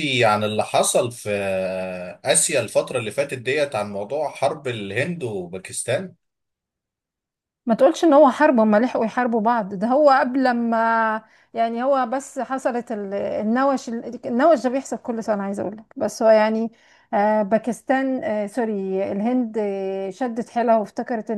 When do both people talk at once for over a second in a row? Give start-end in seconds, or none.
none